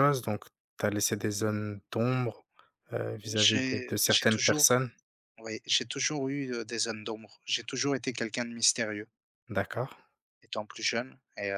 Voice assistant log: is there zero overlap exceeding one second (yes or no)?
no